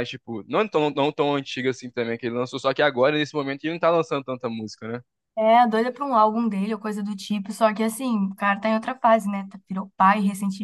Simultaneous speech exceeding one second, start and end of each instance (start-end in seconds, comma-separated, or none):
none